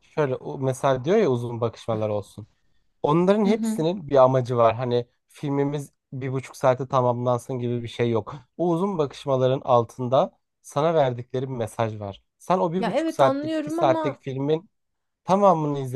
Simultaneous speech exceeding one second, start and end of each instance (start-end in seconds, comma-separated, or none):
12.8-14.2